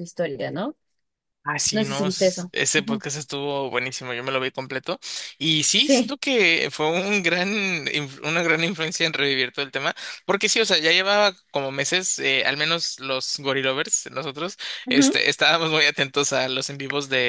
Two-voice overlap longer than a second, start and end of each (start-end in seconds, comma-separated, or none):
1.7-3.0